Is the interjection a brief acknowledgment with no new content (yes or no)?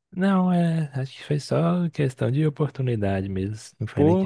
no